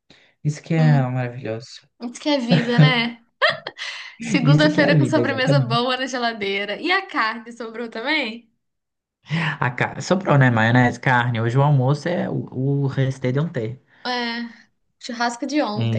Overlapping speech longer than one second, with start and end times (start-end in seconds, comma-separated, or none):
4.4-5.8